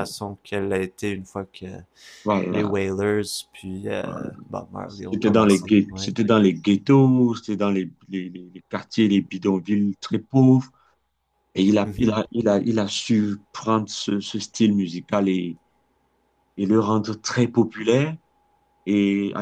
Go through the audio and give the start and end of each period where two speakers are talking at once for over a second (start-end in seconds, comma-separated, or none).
4.9-6.1